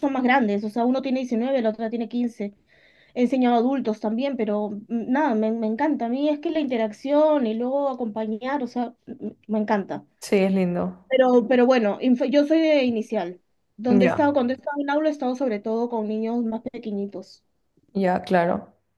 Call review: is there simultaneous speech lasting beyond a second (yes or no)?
no